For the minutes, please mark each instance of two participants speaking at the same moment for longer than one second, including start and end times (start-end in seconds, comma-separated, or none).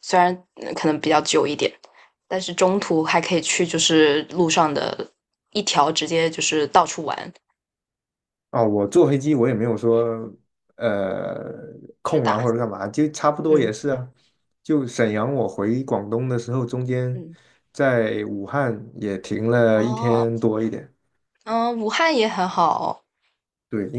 none